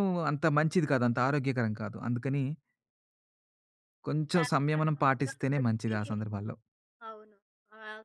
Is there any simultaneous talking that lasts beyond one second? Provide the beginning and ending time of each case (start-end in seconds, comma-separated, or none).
4.3-6.1